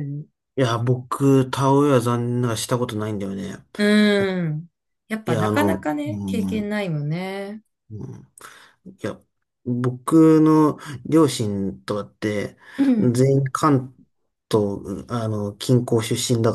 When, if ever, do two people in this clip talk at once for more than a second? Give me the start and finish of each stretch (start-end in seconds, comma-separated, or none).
5.2-6.7